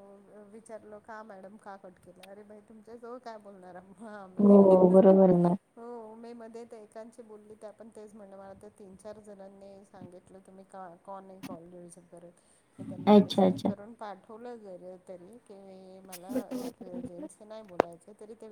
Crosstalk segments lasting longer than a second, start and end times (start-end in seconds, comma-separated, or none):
none